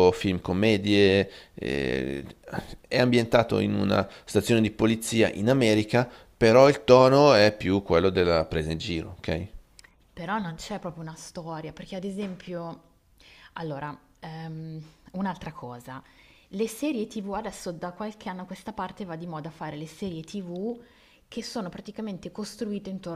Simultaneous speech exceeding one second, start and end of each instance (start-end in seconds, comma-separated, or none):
none